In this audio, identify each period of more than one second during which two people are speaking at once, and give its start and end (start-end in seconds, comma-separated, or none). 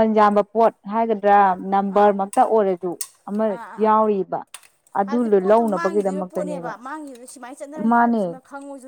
5.0-6.7